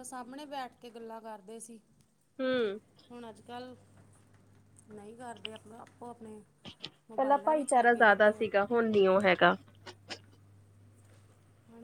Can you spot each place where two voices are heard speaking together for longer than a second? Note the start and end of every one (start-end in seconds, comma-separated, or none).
7.2-8.4